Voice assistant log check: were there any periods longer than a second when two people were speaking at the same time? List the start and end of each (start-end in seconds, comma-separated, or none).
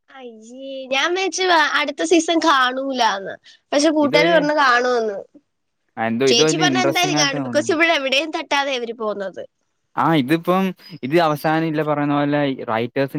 6.3-7.8